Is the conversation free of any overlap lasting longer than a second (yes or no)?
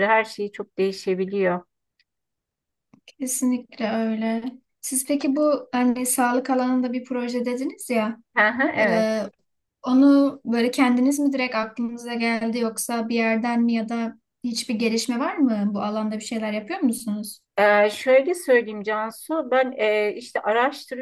yes